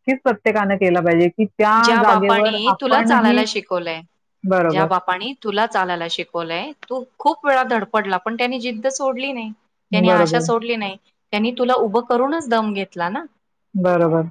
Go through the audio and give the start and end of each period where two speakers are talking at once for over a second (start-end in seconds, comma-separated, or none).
1.8-3.5